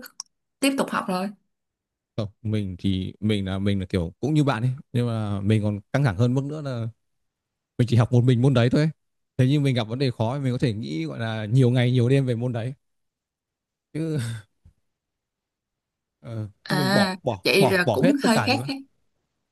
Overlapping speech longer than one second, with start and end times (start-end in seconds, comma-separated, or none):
16.6-18.7